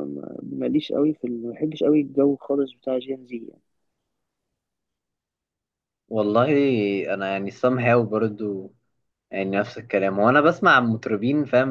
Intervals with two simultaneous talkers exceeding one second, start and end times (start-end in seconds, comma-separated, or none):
none